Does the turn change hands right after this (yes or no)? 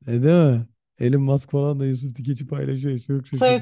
yes